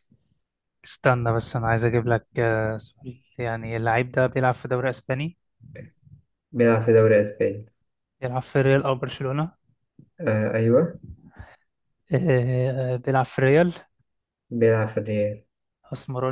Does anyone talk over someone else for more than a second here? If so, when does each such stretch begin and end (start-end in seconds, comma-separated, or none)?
none